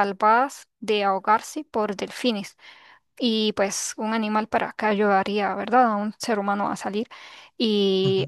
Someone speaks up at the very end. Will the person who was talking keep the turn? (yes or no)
yes